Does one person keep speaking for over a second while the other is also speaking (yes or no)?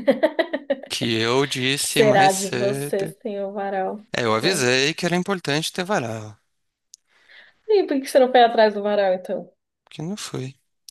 yes